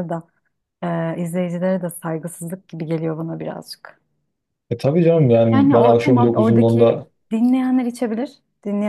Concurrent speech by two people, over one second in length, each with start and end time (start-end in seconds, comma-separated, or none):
5.5-7.1